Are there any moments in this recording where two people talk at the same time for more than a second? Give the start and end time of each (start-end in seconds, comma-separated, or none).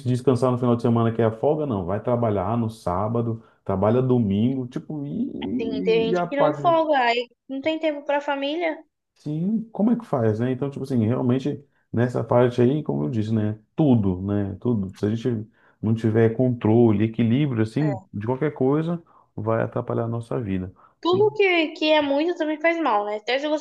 5.5-6.8